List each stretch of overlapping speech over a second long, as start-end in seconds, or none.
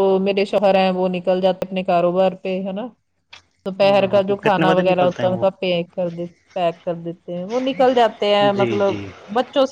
3.8-5.4